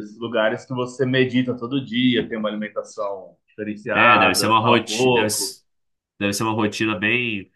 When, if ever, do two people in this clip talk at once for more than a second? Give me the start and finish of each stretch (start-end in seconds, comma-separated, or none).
3.9-5.6